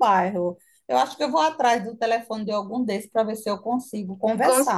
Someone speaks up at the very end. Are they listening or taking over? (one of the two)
taking over